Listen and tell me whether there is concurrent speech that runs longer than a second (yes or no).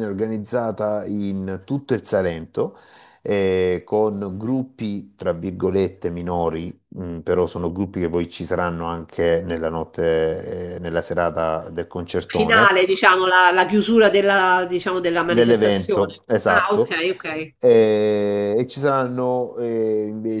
yes